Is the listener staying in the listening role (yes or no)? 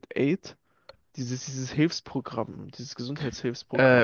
no